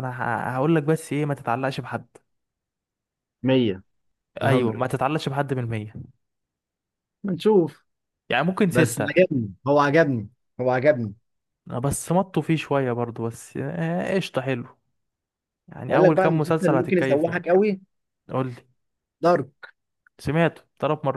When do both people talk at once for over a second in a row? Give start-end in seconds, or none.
15.9-17.4